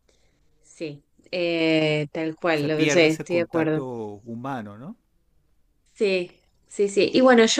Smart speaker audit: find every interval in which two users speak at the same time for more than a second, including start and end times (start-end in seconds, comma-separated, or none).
2.5-3.8